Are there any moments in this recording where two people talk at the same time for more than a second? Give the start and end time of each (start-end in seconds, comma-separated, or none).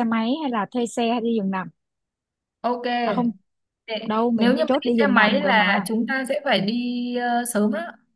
4.1-5.9